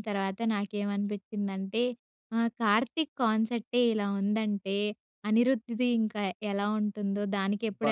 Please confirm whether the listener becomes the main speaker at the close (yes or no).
yes